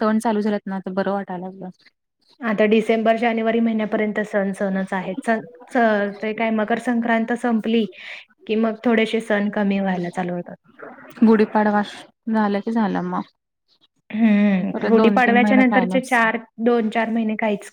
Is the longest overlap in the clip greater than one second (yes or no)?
yes